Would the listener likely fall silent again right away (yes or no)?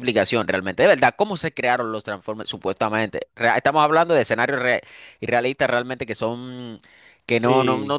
yes